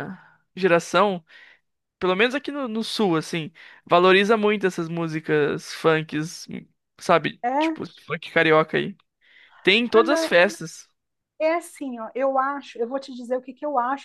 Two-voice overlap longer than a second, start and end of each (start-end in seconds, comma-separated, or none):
none